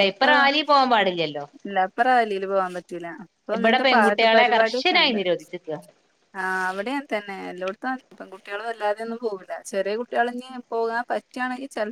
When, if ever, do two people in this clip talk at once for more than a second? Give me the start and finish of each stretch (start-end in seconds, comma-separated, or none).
3.6-5.2